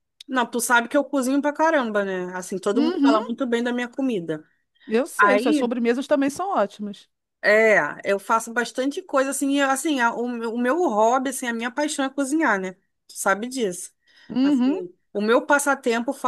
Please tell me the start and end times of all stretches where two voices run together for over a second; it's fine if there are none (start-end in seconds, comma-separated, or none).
none